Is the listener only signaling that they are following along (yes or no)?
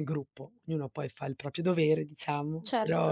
yes